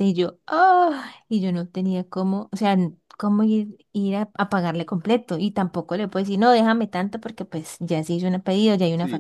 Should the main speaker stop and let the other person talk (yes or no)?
yes